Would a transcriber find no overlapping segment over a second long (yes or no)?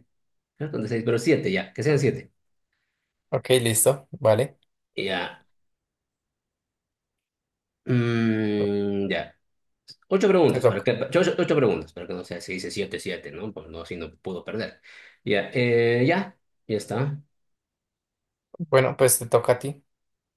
yes